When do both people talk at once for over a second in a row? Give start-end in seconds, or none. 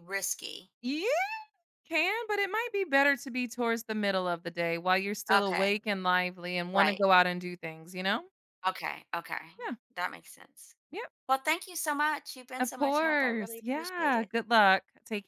12.6-14.3